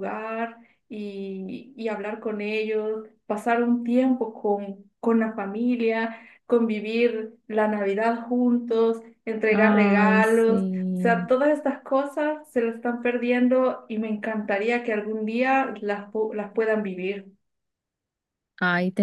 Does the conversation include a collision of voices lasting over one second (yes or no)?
yes